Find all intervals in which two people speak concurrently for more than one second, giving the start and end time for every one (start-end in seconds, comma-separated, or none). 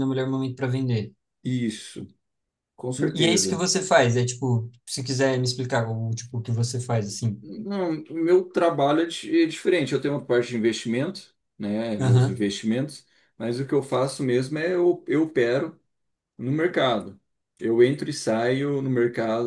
none